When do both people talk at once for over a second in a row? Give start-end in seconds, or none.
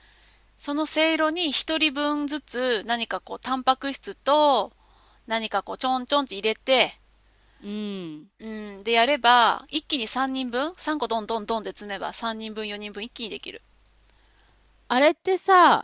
none